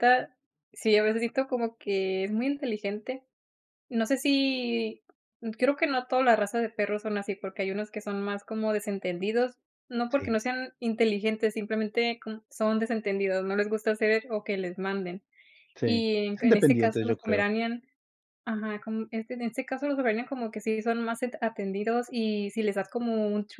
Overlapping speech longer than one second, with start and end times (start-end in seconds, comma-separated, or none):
15.8-17.5